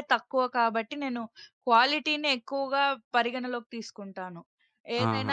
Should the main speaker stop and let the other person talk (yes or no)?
yes